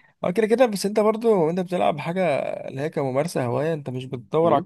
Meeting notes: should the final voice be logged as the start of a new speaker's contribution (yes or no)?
no